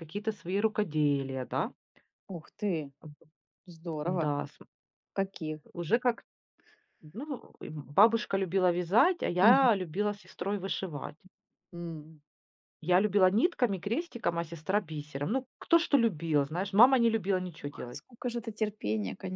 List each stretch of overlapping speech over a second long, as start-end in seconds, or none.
none